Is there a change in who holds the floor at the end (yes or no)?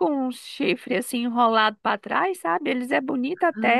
no